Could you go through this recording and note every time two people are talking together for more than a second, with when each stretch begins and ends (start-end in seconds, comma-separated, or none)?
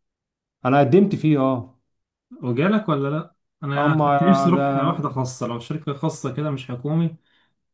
3.8-5.1